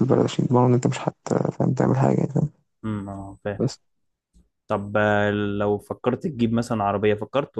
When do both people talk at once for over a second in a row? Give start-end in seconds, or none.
none